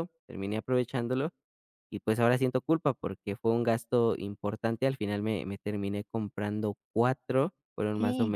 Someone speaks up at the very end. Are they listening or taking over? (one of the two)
listening